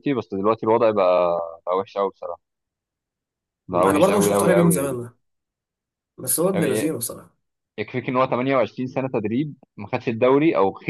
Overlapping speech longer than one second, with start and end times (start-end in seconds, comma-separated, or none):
3.7-5.1